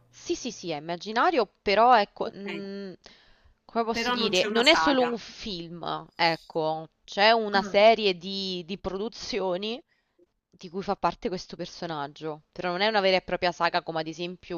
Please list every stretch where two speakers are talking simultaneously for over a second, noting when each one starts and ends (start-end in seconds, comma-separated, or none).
3.9-5.2